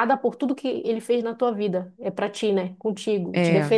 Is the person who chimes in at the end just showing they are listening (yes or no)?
yes